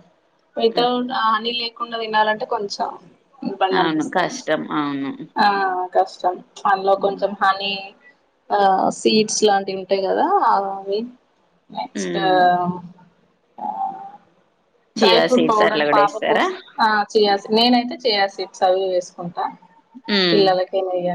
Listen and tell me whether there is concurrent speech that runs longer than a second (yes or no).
yes